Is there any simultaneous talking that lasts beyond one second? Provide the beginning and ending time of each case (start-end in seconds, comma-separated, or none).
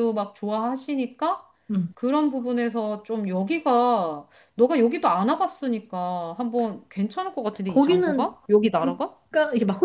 7.7-9.2